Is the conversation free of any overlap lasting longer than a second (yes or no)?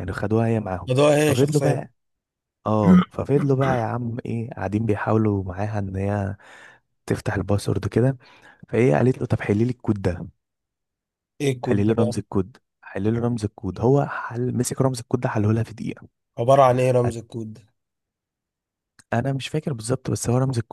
yes